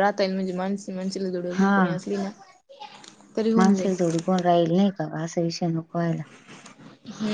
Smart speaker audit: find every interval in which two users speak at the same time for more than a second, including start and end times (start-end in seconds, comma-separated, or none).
none